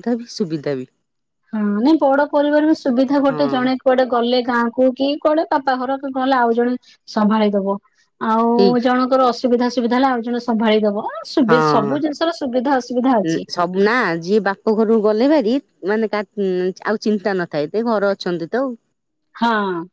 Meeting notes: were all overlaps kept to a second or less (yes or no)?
yes